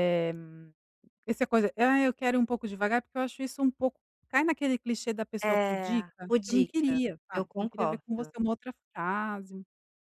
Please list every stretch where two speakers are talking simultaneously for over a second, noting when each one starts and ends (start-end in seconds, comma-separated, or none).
5.4-8.3